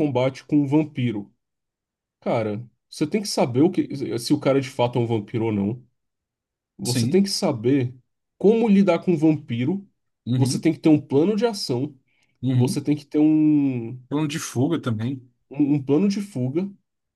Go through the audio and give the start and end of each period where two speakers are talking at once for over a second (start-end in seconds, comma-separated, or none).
none